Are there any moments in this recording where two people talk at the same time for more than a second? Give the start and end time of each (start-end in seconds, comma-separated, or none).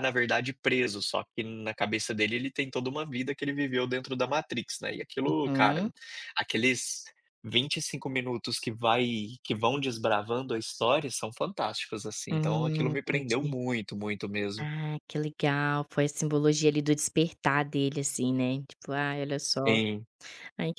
12.3-13.6